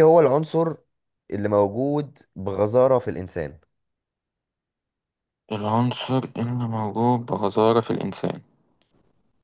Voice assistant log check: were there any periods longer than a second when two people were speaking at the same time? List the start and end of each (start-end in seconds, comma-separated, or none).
none